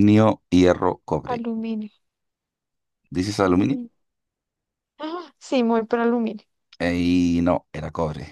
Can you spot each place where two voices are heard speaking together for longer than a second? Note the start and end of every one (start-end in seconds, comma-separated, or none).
none